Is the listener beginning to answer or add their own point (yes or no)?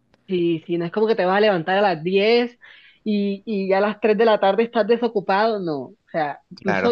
no